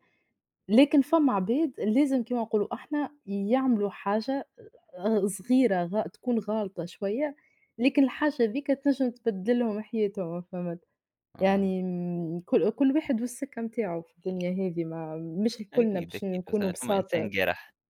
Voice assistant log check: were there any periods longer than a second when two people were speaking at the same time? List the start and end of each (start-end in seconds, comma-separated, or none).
15.7-17.3